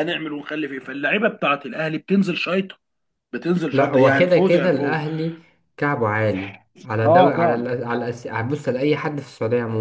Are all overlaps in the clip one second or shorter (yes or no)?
no